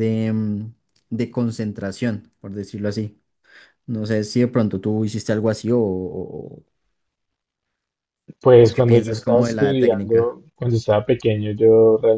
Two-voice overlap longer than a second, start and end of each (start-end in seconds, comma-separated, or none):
8.6-10.3